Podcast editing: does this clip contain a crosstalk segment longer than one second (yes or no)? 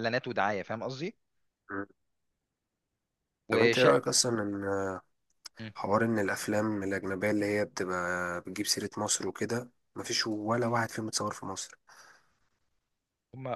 no